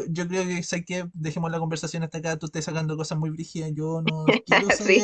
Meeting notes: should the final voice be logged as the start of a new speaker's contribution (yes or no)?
no